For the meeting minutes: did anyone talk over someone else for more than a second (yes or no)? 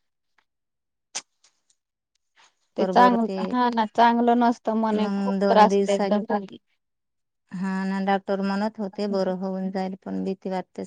yes